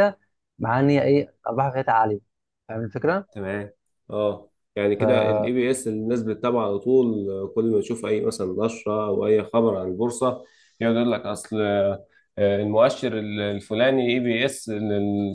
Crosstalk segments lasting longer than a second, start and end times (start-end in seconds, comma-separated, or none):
none